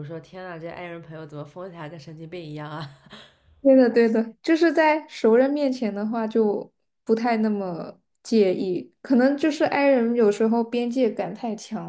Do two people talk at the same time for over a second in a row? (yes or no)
no